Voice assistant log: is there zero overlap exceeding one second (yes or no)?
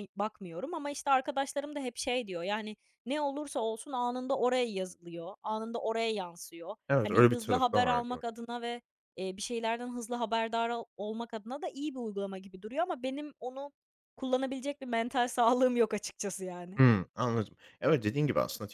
no